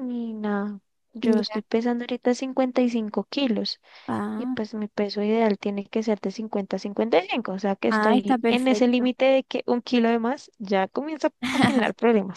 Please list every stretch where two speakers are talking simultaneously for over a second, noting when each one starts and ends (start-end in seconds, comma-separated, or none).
7.9-9.1